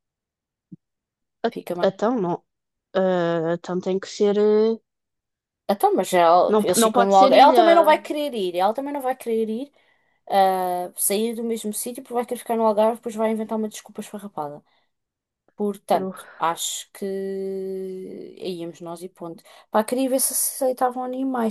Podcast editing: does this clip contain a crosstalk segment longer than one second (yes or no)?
yes